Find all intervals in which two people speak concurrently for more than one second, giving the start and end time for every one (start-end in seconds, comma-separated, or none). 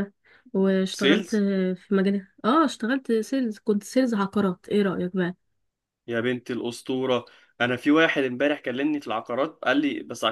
none